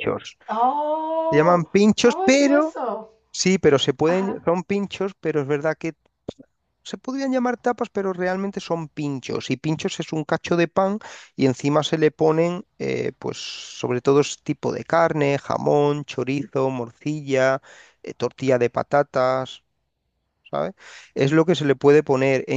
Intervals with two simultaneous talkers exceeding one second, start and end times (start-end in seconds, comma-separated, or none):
1.3-2.8